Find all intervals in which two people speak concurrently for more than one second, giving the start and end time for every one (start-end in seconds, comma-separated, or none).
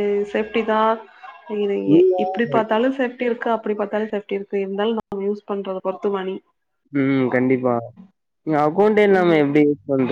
none